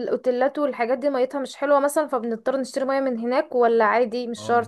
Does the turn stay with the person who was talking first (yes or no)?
no